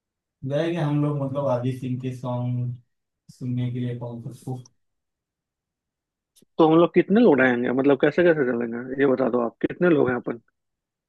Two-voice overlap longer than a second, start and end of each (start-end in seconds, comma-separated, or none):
none